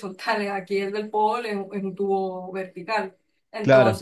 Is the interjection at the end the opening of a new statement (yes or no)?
no